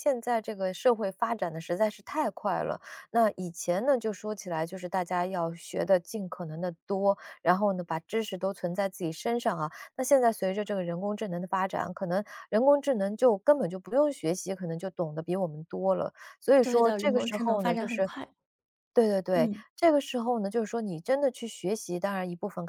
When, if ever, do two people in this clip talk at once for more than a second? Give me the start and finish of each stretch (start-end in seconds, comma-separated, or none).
16.6-18.1